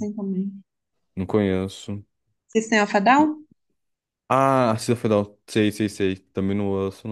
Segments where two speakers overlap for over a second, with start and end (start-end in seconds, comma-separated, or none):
none